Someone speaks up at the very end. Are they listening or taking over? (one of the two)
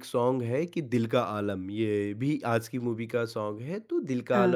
listening